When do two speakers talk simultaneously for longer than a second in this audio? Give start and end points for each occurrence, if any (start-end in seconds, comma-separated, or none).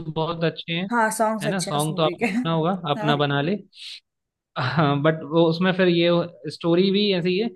1.4-3.2